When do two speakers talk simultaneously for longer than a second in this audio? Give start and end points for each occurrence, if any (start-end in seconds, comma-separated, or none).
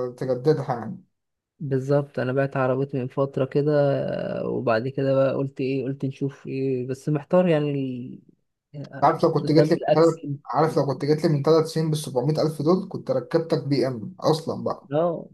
8.8-10.4